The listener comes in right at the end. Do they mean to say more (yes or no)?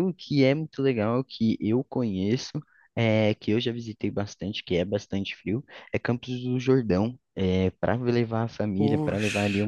no